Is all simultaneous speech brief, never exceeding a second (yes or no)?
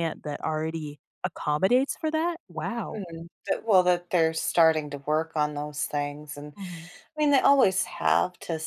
yes